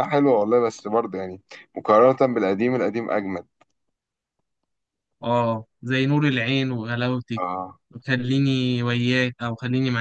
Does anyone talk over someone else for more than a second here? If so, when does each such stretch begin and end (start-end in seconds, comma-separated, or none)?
none